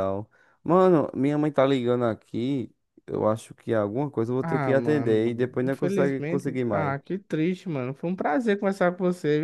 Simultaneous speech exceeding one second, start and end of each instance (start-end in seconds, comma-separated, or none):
4.4-7.0